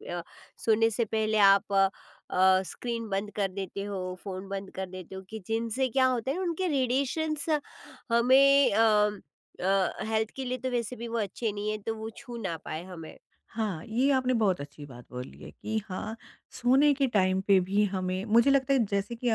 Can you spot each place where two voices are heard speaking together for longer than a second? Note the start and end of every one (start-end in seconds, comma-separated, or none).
none